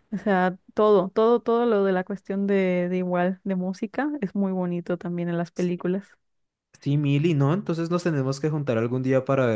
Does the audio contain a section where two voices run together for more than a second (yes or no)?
no